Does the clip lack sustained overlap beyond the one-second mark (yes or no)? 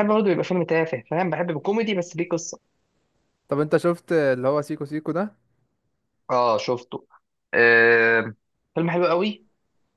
yes